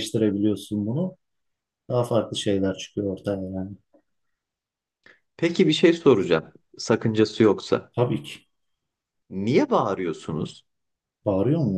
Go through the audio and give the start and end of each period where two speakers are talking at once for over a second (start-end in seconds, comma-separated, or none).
none